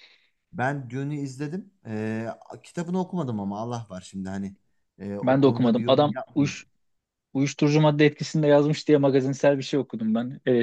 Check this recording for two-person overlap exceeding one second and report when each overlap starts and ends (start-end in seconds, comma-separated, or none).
5.2-6.5